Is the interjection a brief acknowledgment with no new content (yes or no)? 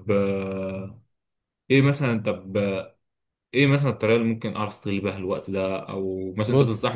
yes